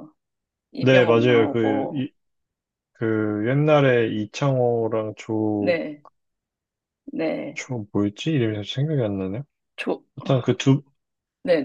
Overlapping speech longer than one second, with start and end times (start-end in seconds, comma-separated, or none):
0.8-2.1